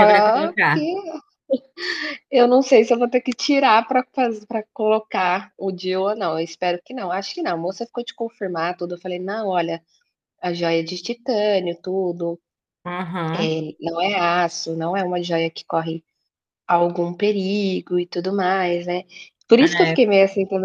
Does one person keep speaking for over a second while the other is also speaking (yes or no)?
no